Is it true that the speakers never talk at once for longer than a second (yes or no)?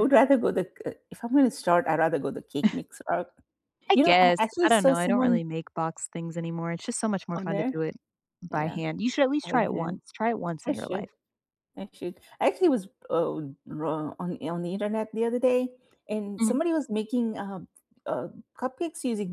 no